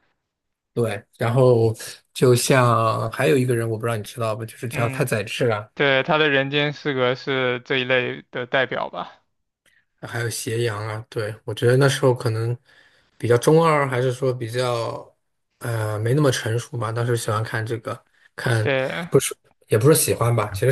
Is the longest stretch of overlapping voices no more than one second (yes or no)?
yes